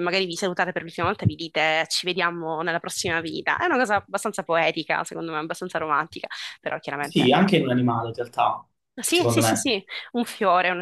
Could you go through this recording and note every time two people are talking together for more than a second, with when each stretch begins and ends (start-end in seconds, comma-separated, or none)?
none